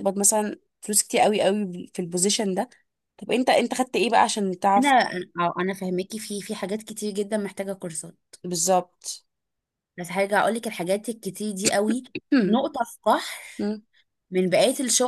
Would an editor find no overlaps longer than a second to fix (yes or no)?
yes